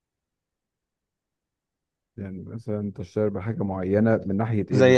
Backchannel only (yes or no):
no